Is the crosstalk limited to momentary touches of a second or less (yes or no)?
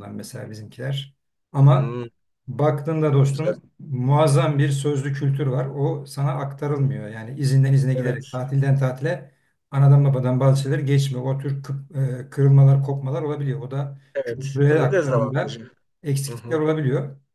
no